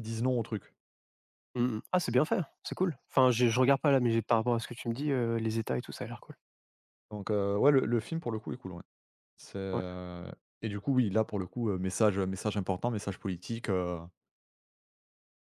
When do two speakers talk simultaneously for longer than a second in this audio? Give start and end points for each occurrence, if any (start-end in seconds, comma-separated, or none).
none